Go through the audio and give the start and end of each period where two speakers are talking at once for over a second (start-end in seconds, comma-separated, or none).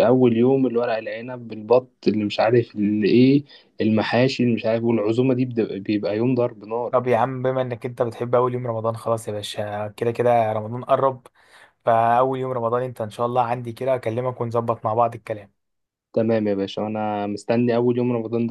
none